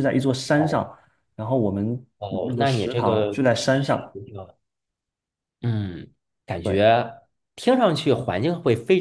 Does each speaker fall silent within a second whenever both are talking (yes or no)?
no